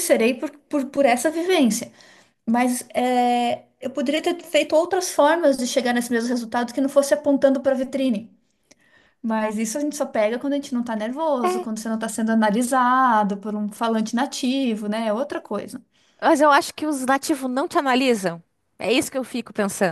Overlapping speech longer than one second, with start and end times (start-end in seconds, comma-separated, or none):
none